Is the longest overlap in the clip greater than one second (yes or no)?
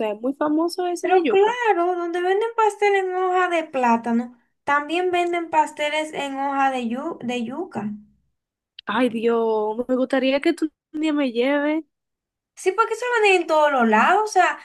no